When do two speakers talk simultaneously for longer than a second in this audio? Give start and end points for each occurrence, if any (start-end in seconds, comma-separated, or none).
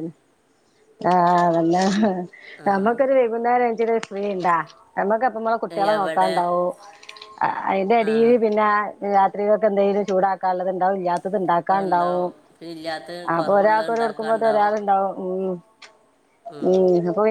13.4-14.7